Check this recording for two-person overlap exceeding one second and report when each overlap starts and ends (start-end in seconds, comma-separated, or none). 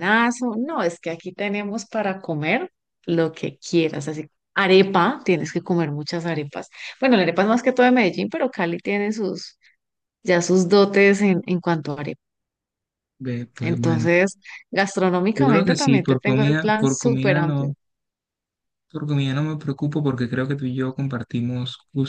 15.4-17.7